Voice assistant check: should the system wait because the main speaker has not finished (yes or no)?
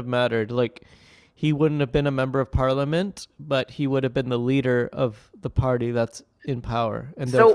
no